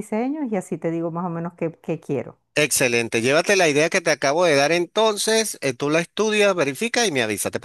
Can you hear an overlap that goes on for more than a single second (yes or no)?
no